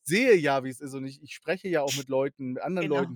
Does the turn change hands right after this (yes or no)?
no